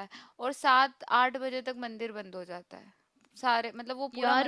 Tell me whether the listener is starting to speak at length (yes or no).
no